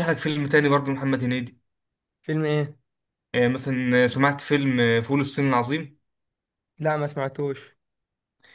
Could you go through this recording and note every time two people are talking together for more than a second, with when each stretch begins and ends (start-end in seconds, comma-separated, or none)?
none